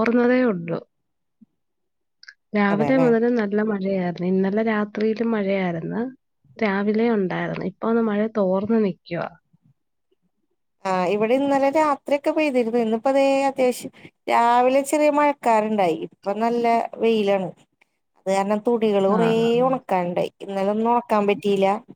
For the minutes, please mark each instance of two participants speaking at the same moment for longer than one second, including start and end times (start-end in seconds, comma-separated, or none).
none